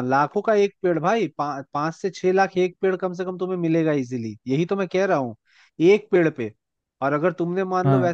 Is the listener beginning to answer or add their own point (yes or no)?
no